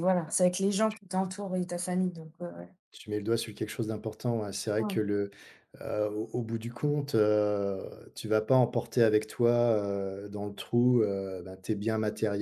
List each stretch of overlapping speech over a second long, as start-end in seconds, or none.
none